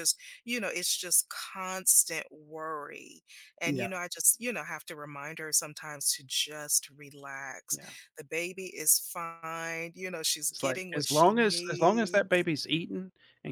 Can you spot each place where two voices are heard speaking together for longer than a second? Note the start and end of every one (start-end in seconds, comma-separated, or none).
10.5-12.5